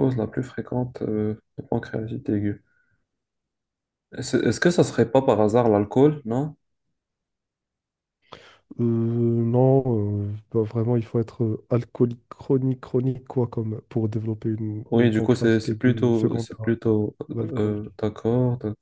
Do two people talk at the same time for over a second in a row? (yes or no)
yes